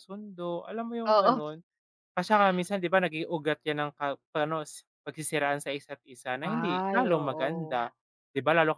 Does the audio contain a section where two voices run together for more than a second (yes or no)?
yes